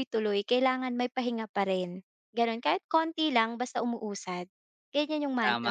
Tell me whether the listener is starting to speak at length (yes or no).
yes